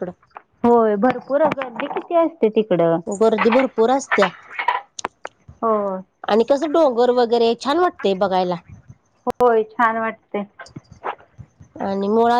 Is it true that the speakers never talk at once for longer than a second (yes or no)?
yes